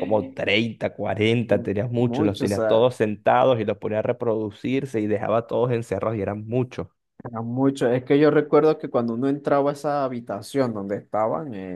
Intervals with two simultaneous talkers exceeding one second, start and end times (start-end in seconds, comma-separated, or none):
1.5-2.9